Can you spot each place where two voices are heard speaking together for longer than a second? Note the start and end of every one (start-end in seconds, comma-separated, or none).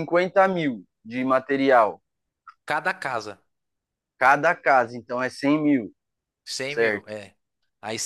none